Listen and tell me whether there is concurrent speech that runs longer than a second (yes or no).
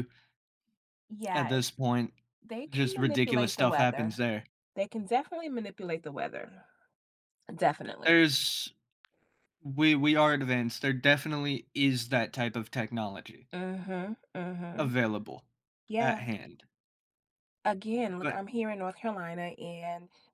yes